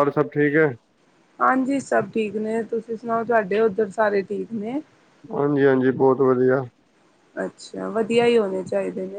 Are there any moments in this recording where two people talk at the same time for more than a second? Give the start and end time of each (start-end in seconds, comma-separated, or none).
none